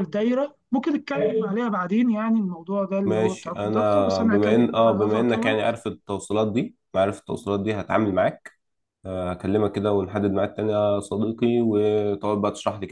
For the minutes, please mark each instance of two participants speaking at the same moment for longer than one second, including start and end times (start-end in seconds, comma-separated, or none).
3.0-5.5